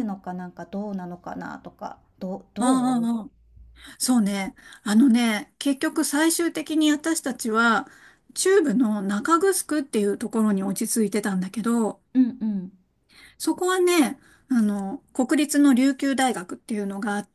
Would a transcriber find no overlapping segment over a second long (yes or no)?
yes